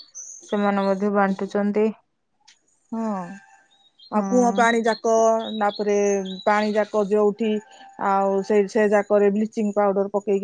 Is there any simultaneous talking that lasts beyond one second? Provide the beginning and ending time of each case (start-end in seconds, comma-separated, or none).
none